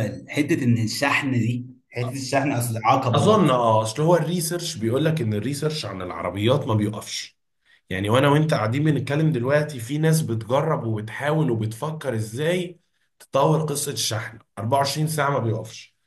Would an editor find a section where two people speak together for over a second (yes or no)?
no